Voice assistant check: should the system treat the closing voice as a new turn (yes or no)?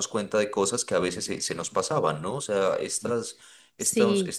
no